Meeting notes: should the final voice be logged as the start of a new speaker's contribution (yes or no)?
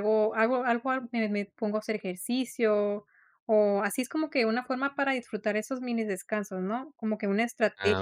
no